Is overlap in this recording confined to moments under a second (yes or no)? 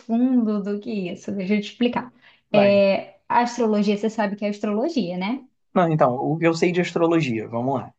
yes